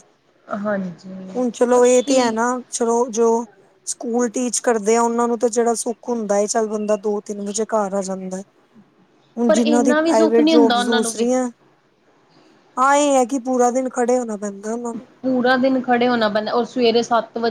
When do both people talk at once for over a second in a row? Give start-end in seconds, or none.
9.5-11.3